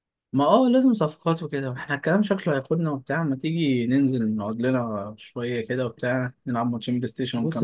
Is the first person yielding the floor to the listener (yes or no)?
yes